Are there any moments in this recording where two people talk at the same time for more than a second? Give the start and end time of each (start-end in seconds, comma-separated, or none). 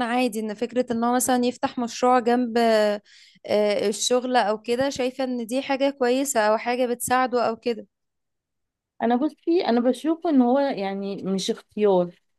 none